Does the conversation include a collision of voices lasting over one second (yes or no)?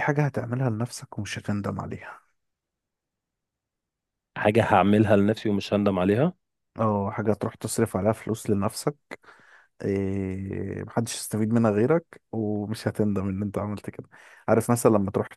no